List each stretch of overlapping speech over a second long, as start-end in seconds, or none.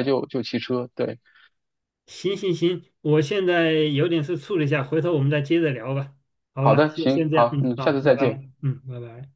6.6-8.4